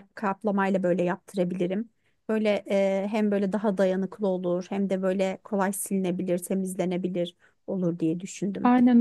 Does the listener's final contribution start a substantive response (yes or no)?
yes